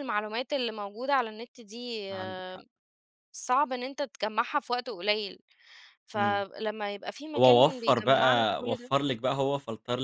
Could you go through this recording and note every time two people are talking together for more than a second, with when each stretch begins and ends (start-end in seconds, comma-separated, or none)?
7.4-8.9